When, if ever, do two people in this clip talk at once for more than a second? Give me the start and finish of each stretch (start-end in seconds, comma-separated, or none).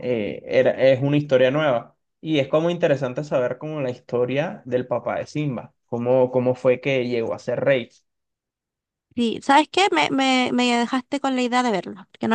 none